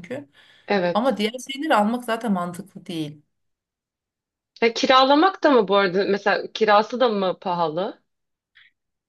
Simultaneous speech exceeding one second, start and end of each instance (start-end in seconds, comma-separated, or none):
none